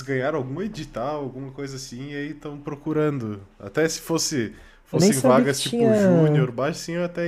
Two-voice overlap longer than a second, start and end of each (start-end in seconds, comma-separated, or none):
4.9-6.5